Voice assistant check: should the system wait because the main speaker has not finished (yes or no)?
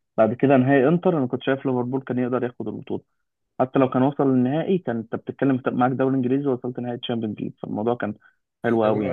yes